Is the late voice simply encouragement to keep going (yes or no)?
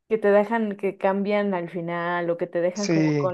no